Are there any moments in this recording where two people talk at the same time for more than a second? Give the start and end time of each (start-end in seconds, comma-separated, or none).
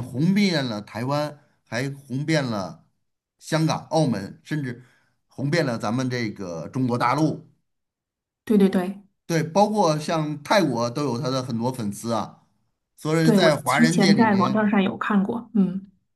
13.2-14.7